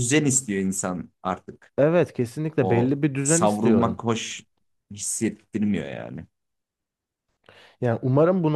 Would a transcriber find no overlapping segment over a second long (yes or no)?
no